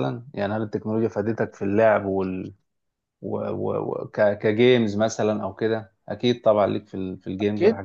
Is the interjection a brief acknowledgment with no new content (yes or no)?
no